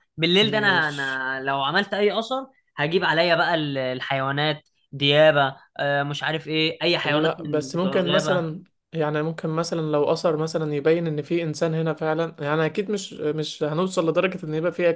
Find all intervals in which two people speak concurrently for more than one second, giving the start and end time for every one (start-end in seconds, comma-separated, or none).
7.0-8.5